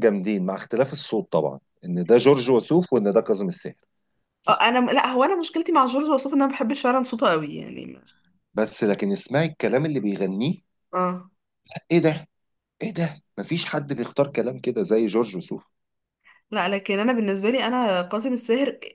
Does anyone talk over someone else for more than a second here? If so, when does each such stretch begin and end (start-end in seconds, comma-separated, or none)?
none